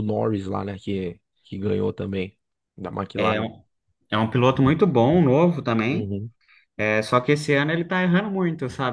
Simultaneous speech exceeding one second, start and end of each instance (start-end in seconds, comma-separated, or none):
none